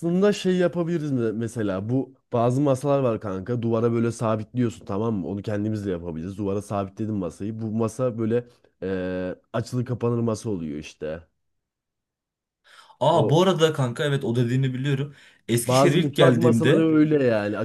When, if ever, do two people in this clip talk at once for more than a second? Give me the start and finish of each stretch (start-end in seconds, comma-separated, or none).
15.7-16.9